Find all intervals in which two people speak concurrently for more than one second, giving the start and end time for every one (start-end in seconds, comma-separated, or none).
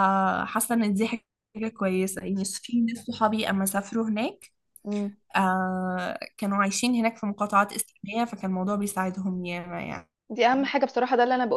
none